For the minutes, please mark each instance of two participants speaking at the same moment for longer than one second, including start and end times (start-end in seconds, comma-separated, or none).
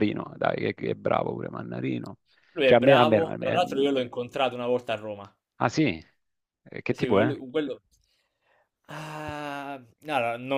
2.6-3.9